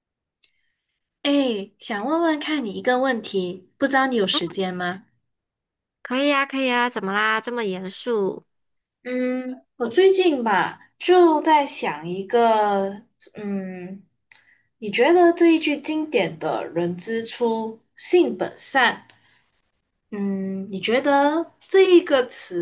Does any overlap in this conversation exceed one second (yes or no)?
no